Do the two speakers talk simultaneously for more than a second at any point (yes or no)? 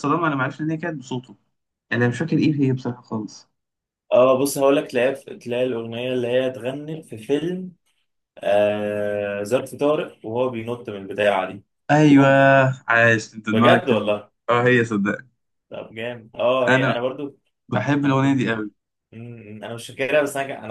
no